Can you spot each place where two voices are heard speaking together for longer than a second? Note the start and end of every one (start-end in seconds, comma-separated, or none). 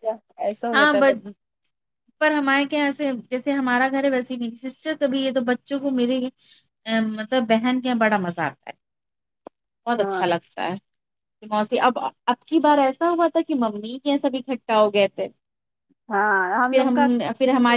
none